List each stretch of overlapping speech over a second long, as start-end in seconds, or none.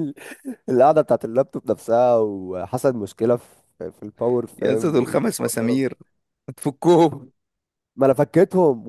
4.6-5.8